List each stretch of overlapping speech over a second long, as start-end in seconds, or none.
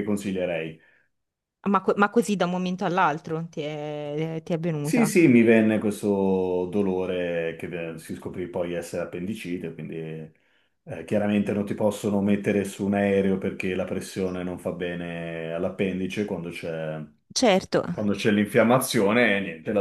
none